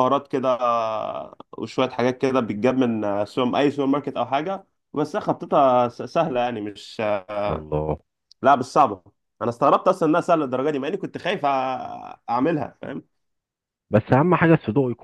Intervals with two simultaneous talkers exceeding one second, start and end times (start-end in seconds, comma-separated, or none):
none